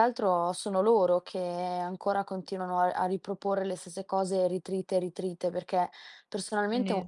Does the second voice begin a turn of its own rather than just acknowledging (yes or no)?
no